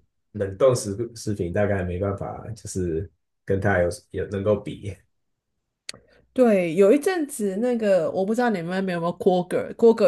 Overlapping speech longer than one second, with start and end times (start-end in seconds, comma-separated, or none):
none